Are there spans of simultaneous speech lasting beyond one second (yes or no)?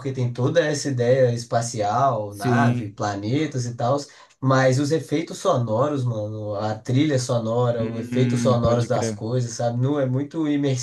yes